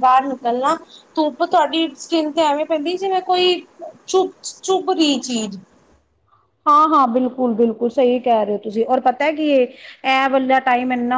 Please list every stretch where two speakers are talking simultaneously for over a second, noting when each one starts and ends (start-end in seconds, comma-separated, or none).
none